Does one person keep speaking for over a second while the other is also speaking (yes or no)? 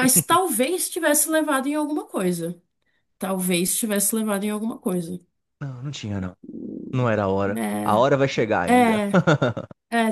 no